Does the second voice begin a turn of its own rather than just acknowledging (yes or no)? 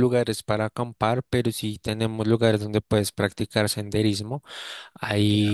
no